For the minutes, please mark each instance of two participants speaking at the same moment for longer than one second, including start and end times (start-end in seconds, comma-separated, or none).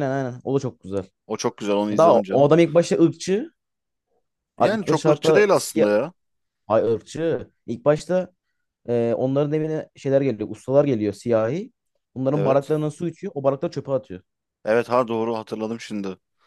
4.6-5.9